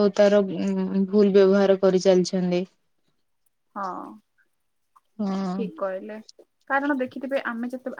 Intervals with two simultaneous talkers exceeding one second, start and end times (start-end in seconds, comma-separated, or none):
none